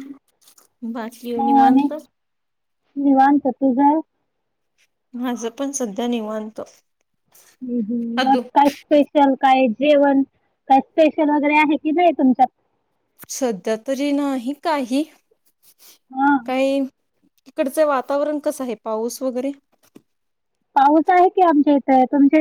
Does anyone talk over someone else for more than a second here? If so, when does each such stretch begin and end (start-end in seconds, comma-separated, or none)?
none